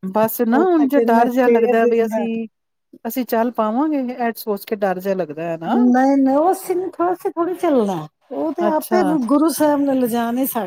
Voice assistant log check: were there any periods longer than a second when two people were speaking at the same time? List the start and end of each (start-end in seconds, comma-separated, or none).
0.5-2.2